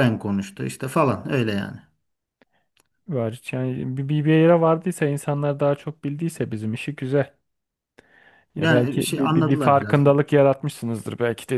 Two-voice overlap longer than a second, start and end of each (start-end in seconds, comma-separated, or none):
8.6-10.2